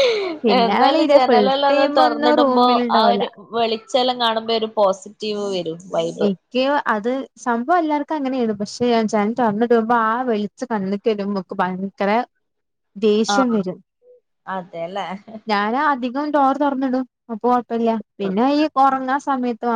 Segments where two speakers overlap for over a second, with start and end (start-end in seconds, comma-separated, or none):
0.6-3.2